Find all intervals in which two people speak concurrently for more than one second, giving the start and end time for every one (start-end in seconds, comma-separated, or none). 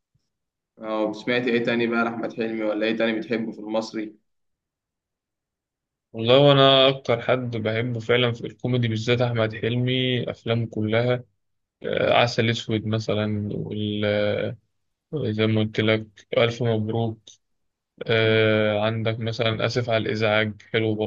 none